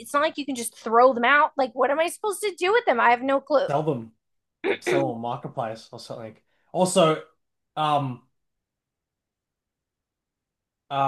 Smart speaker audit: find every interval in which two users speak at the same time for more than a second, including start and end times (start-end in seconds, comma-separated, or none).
none